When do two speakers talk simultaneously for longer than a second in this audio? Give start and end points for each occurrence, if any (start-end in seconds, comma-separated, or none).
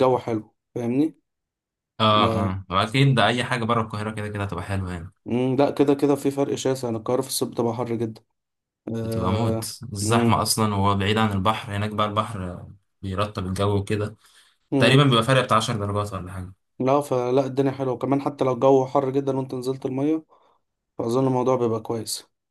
9.0-10.4